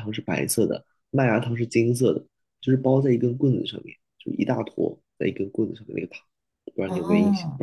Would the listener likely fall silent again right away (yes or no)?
no